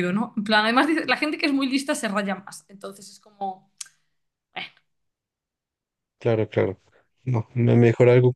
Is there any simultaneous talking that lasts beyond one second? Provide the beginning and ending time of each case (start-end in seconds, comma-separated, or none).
none